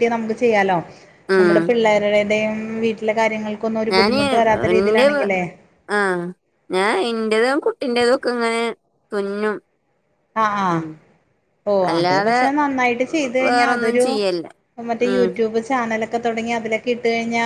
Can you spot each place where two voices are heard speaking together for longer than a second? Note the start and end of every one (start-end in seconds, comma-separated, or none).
none